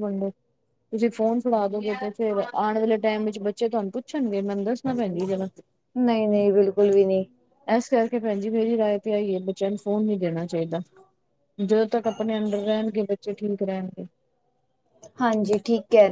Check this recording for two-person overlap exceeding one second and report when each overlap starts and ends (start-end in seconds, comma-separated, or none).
none